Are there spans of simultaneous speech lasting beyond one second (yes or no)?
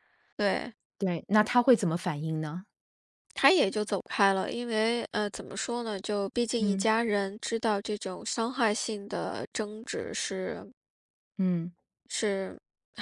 no